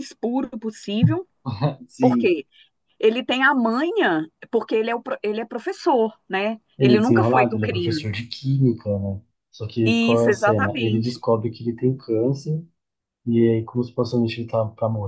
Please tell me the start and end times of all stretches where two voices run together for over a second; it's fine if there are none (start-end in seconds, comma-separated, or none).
6.8-8.1, 9.8-11.2